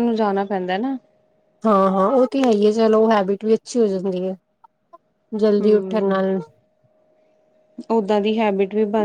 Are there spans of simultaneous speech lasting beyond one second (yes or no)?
no